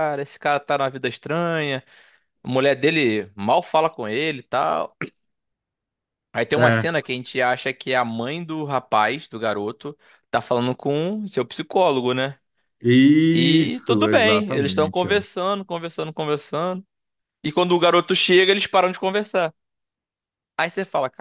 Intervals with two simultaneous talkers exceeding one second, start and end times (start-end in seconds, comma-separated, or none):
13.3-15.1